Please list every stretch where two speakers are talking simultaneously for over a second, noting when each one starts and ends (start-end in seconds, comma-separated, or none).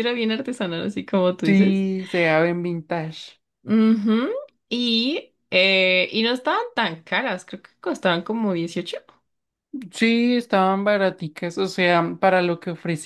none